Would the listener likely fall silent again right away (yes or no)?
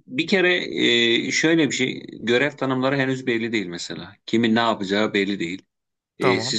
yes